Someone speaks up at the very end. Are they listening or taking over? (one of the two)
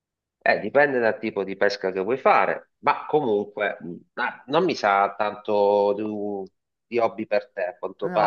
listening